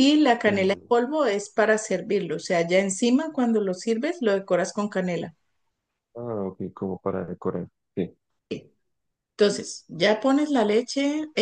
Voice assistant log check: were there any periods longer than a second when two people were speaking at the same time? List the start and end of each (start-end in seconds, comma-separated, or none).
none